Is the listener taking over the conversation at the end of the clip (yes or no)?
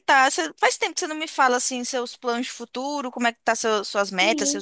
yes